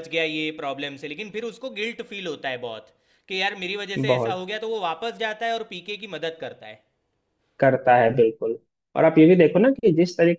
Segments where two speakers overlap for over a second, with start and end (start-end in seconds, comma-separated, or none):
none